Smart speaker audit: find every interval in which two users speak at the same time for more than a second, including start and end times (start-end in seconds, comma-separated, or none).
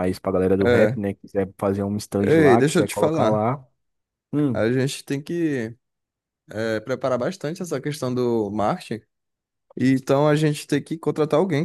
2.2-3.5